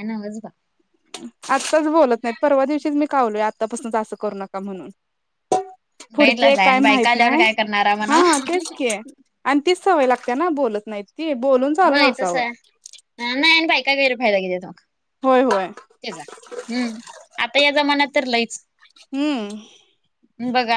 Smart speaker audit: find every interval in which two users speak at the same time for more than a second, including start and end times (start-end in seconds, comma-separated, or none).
6.2-7.4